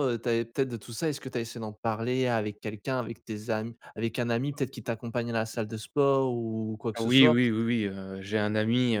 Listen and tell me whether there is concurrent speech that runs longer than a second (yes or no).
no